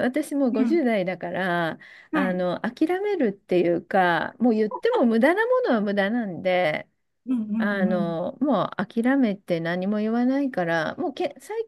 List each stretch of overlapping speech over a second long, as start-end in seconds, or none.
none